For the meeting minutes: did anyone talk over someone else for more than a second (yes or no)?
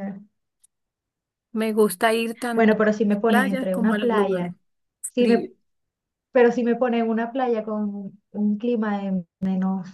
yes